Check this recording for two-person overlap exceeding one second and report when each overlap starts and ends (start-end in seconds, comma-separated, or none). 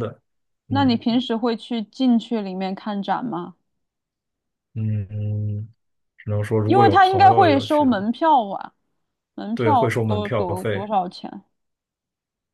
6.6-8.1, 9.5-10.9